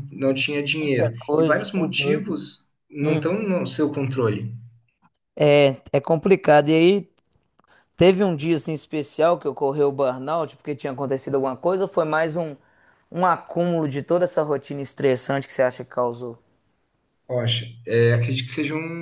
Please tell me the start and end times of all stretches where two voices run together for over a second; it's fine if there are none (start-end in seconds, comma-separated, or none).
0.8-2.4